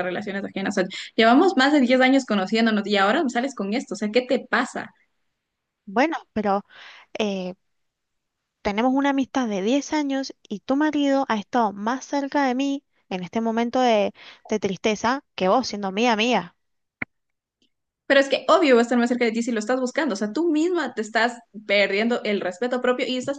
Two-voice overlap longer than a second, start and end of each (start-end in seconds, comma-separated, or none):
none